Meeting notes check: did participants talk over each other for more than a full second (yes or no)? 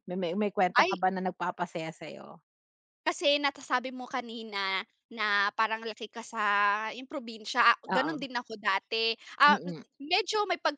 no